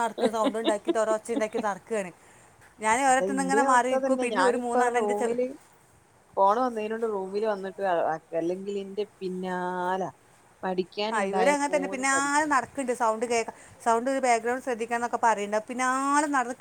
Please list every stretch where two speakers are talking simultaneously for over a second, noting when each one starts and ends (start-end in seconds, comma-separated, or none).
3.1-5.3